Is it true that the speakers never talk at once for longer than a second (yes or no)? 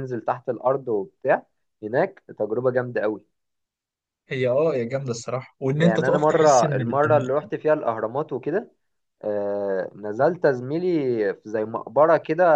no